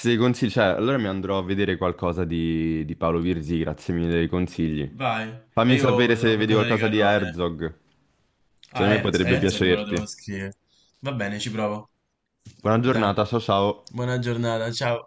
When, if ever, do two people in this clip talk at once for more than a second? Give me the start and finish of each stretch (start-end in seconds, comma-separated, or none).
5.6-7.3, 8.7-10.1